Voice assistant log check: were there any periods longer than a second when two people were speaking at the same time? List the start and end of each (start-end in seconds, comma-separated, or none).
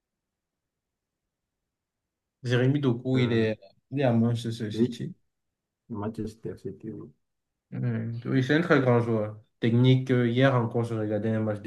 none